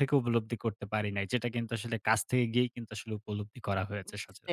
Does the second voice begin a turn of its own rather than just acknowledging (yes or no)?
yes